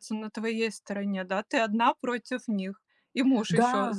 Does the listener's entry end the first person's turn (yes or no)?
yes